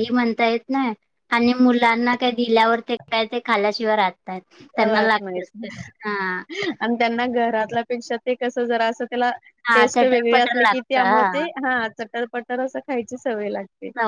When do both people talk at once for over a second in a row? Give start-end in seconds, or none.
9.7-11.5